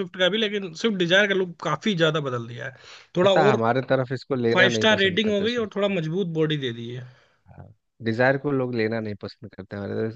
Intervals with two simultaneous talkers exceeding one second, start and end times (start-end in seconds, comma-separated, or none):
4.5-5.9